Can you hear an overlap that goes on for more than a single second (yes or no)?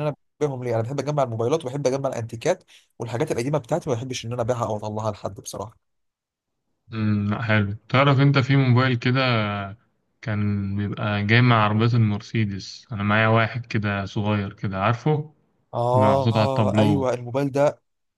yes